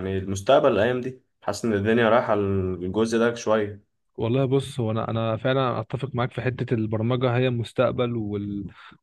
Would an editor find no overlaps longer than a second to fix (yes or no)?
yes